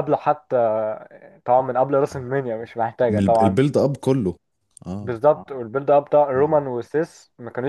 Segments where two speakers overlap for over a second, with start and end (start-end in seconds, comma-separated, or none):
none